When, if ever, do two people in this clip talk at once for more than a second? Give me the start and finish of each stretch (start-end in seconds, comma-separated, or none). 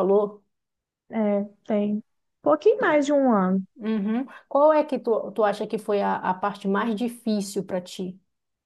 none